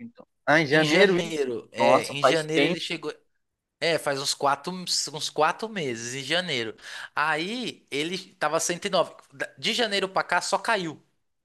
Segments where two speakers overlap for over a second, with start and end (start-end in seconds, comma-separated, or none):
0.7-2.8